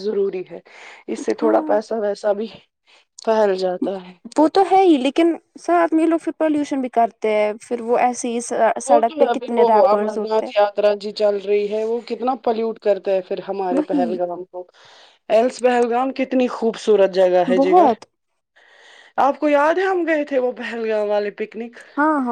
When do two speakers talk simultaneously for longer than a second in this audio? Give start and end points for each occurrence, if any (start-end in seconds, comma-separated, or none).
8.8-10.5